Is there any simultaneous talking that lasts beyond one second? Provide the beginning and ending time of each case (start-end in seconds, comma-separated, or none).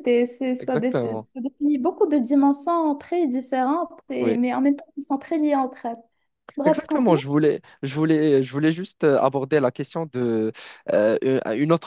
none